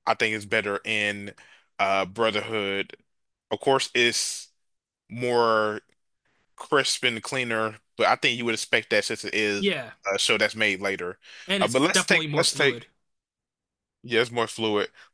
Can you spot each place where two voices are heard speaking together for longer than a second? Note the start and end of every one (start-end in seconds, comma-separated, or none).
11.6-12.8